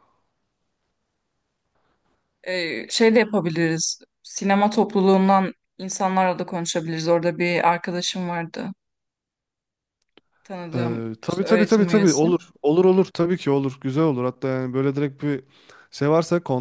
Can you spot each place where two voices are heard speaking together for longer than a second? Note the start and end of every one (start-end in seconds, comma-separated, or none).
10.8-12.3